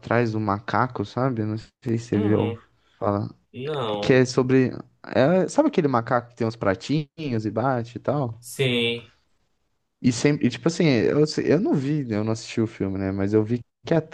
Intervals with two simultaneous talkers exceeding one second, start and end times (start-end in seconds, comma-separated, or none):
none